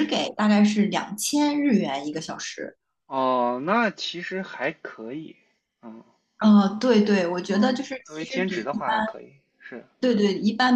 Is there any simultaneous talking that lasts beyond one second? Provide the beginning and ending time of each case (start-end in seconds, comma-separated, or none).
7.5-8.9